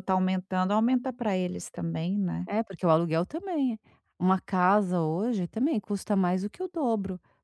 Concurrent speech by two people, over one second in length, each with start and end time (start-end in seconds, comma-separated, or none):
none